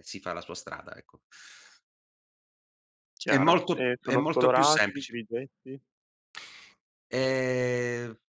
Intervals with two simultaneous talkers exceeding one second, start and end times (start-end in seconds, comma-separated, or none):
3.2-5.2